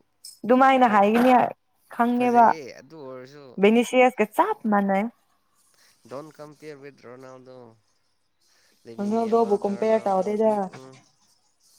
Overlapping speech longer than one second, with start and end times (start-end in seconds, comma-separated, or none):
9.0-10.5